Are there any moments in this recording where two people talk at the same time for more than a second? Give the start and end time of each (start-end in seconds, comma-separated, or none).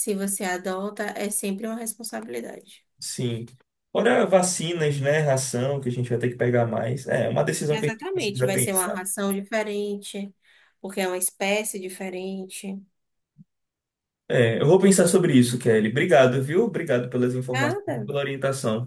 7.7-9.0